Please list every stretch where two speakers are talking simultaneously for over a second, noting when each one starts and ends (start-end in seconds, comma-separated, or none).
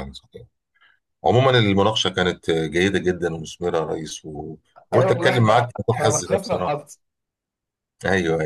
4.9-6.9